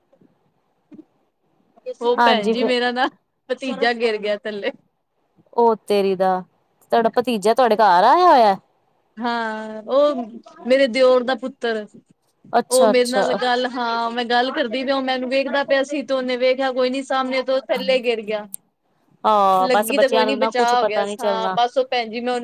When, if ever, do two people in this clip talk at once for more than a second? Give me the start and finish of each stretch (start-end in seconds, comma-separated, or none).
19.6-21.6